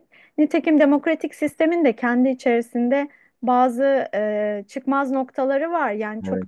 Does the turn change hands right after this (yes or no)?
no